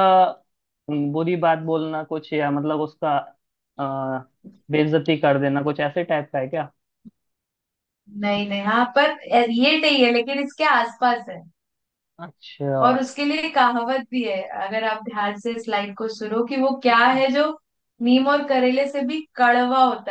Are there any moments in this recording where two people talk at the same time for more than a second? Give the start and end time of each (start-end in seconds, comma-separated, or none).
none